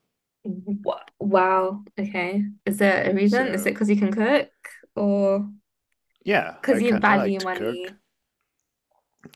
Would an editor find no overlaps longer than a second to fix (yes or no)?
no